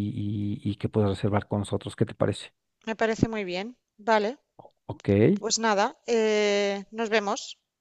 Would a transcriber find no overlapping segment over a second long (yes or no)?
yes